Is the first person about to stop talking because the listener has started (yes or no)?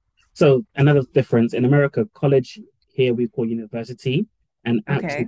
no